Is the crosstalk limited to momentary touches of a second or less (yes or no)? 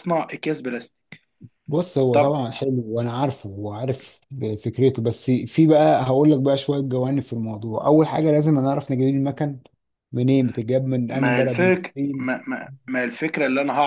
no